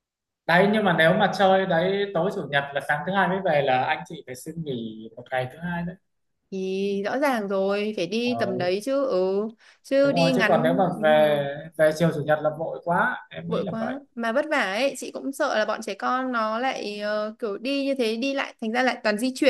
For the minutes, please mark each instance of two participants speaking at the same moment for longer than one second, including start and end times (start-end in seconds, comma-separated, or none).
10.0-11.4